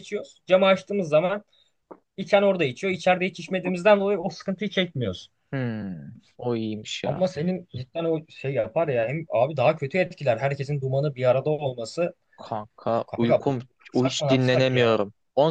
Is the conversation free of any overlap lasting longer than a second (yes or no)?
no